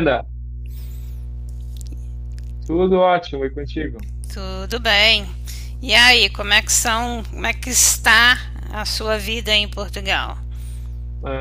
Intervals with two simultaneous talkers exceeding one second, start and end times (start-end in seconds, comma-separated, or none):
none